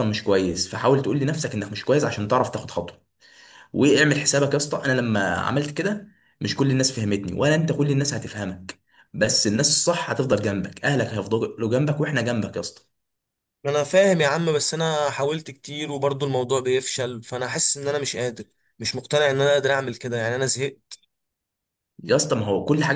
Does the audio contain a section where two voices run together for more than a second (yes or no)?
no